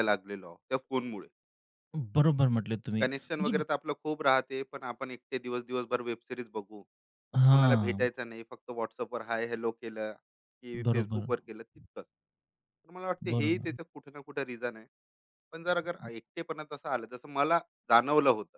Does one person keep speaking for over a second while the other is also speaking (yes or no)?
no